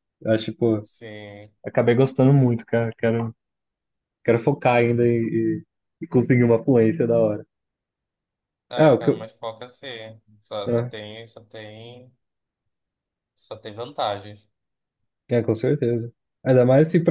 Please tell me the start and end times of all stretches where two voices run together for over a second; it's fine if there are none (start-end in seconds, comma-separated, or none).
none